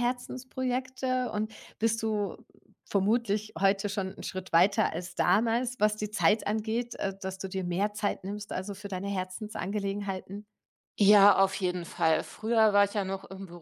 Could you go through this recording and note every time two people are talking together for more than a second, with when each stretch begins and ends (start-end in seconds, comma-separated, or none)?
none